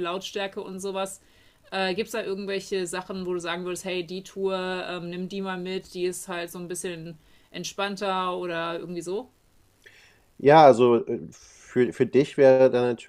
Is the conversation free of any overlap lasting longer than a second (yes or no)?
yes